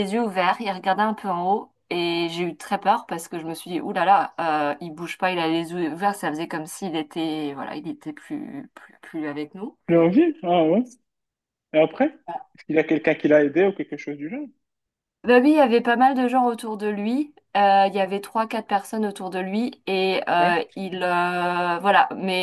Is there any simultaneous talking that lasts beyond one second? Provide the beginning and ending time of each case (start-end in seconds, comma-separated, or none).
none